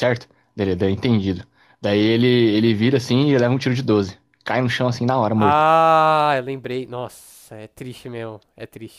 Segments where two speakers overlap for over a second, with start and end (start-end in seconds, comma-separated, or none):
none